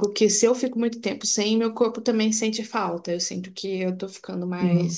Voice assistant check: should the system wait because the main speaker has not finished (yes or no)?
yes